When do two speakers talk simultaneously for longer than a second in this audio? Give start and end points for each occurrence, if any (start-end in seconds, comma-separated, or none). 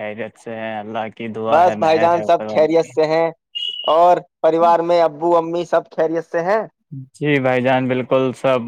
1.5-2.9